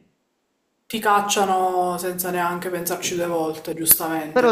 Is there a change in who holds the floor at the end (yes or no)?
yes